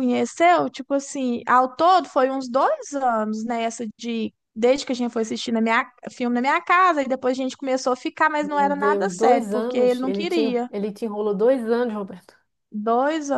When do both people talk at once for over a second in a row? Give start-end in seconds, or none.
8.4-10.7